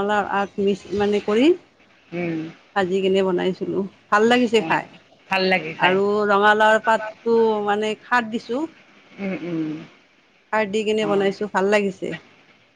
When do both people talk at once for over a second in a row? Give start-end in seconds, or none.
none